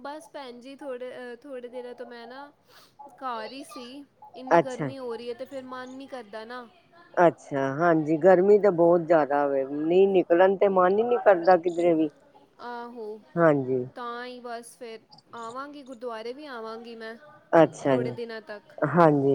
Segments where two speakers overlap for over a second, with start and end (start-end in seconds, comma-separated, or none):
none